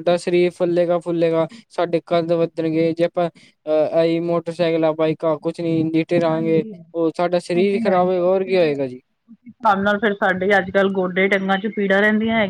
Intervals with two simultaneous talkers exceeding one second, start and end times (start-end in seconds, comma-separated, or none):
none